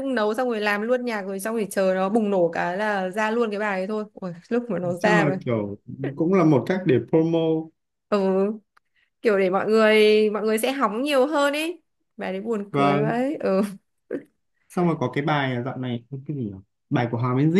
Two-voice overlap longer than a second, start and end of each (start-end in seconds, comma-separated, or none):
none